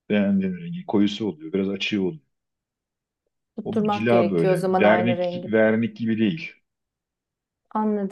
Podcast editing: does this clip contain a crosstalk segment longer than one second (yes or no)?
yes